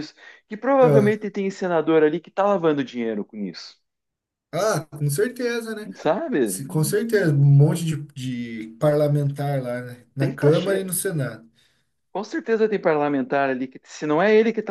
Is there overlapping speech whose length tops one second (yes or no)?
no